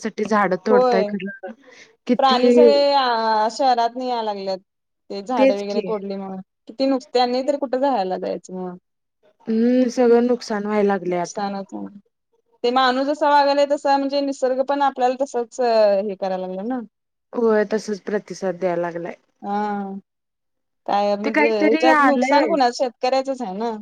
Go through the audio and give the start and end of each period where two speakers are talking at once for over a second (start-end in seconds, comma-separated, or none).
21.2-22.5